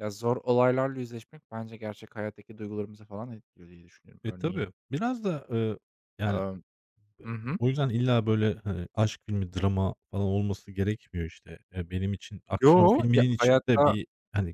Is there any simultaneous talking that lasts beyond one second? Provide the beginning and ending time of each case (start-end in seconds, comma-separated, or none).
12.6-13.9